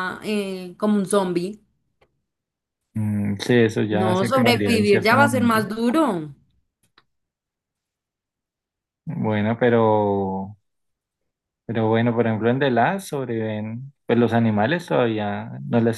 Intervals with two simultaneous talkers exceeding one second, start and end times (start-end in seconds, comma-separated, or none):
4.0-5.7